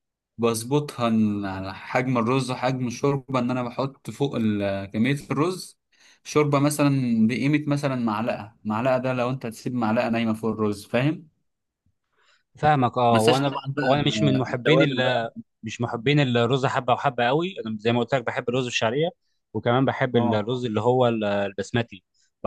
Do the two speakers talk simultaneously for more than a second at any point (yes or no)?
yes